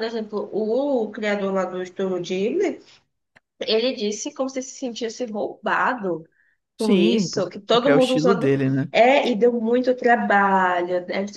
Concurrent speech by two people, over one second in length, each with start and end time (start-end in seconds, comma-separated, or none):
6.8-8.5